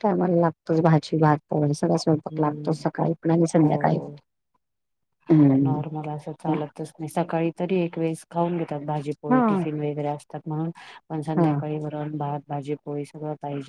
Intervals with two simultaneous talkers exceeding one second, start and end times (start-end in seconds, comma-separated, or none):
none